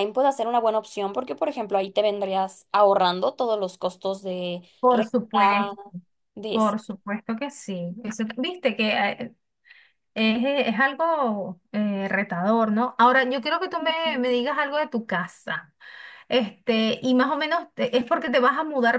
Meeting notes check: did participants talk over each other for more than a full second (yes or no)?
no